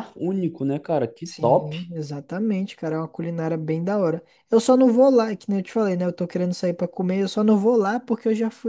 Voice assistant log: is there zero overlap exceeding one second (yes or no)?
yes